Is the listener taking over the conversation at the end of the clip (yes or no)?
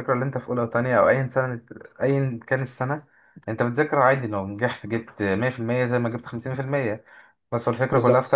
no